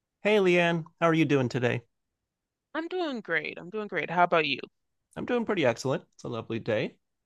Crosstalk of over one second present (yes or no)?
no